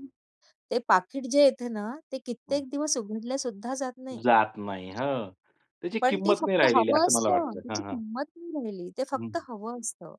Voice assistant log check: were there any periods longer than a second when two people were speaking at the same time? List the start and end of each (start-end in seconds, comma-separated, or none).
6.0-8.0